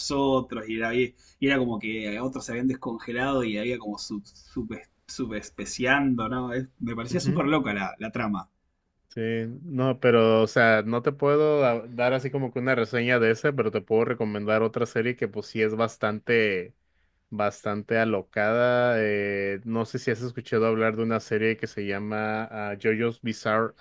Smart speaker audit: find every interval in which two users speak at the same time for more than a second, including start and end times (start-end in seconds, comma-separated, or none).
none